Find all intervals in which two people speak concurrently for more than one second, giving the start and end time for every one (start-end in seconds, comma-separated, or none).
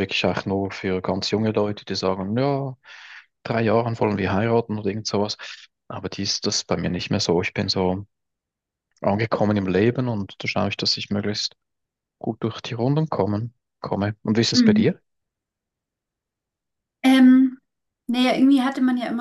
none